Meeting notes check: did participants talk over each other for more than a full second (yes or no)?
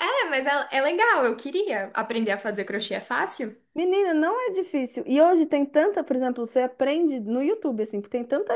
no